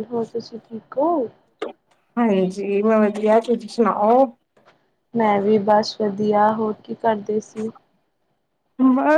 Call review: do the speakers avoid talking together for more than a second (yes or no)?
yes